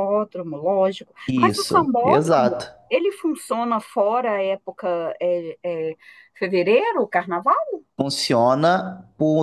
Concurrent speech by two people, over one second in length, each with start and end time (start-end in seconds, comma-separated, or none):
1.3-2.7